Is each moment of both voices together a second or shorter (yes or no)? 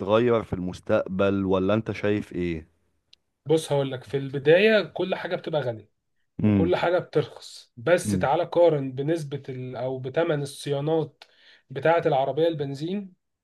yes